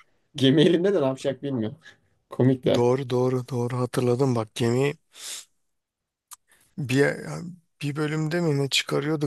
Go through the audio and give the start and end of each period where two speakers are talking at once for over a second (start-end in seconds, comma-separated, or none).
none